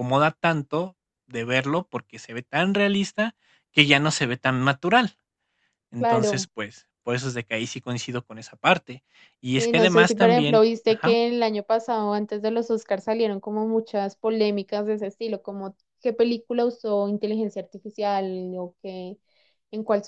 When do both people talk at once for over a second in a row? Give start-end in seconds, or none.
9.6-11.2